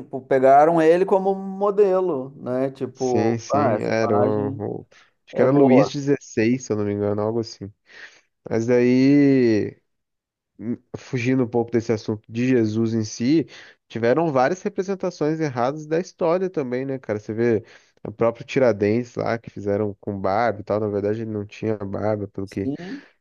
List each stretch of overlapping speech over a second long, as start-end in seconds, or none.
2.9-4.6